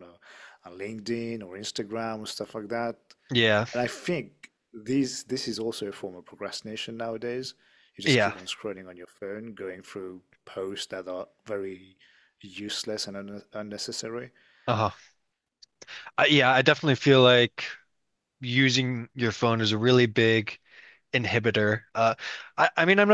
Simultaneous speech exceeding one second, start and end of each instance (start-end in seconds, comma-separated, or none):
none